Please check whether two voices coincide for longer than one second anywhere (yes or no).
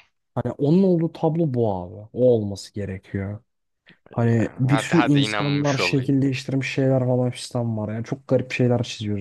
yes